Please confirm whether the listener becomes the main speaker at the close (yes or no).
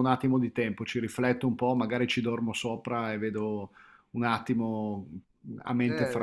yes